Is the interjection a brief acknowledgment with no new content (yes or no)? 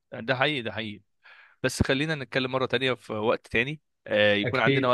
yes